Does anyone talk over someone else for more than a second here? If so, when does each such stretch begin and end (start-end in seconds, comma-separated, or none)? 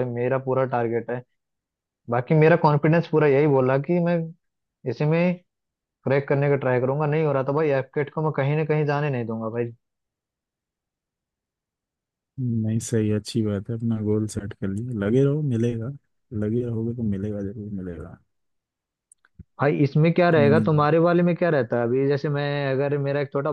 none